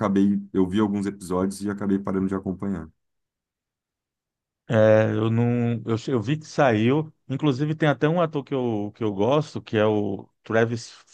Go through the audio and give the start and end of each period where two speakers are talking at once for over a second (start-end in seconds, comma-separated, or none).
none